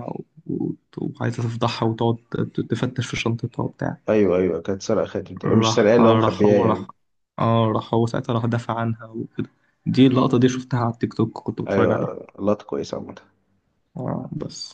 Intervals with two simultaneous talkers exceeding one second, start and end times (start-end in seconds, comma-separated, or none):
5.4-6.9